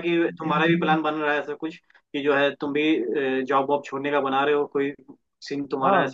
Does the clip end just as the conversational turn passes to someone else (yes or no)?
yes